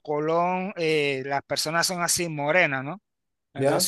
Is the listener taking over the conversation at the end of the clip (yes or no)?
no